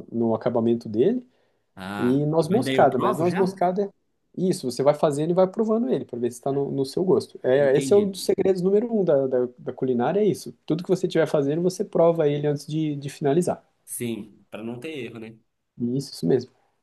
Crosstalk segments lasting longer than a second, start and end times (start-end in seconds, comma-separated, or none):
2.0-3.6